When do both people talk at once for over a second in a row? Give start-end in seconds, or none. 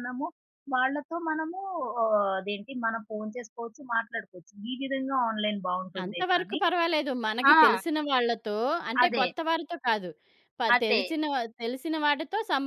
none